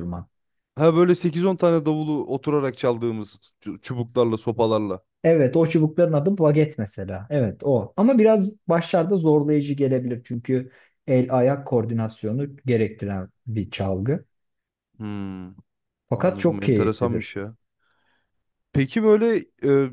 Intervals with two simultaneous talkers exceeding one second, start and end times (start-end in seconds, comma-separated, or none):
16.1-17.4